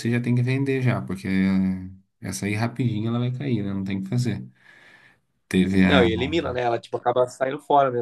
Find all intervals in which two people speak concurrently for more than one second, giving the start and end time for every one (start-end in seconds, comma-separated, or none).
none